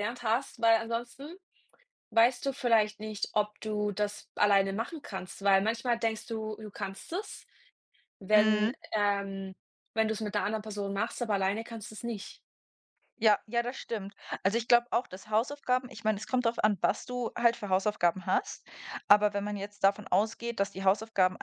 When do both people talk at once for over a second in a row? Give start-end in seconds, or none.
none